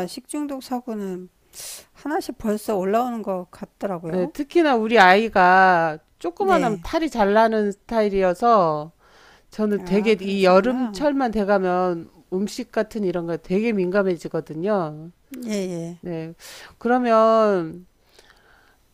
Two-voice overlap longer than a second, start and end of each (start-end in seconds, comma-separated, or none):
9.8-11.1